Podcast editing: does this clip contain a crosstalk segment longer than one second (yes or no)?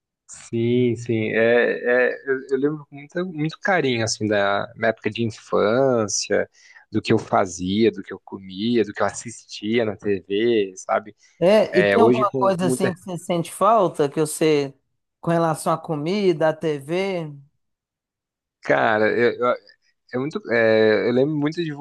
yes